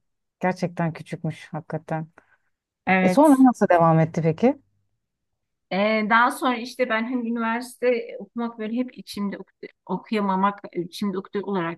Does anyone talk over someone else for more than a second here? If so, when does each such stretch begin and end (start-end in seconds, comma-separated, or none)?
none